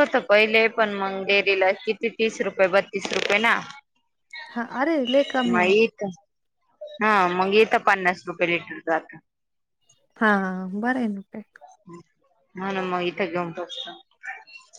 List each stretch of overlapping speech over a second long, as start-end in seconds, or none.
none